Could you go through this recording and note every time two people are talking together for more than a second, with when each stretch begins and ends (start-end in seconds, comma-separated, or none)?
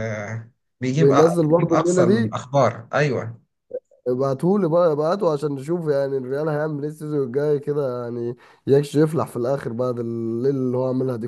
1.0-2.4